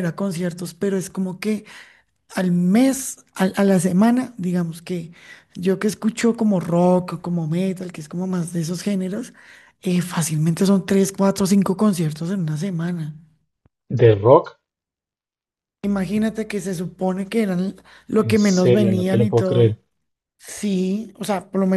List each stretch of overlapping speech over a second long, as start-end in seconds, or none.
18.1-19.8